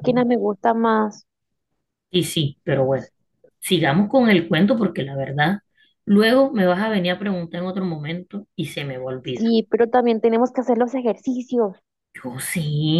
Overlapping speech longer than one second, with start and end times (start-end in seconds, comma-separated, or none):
none